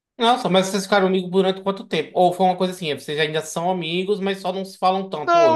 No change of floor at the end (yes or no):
no